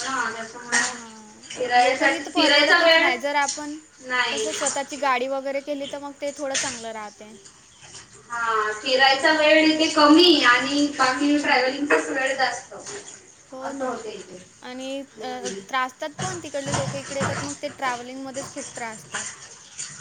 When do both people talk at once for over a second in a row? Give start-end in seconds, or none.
1.8-3.1